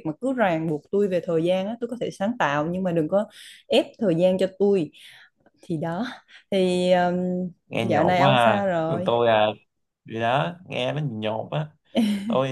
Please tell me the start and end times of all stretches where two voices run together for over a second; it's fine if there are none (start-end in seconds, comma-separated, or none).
7.8-9.1